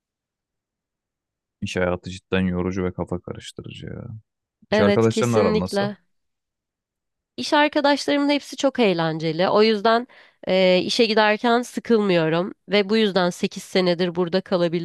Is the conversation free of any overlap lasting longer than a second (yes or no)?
no